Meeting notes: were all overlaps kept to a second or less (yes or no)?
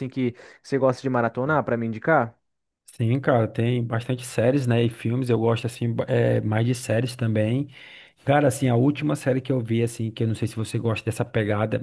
yes